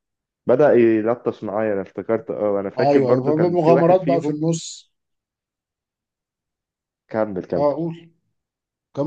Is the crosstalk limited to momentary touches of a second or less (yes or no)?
no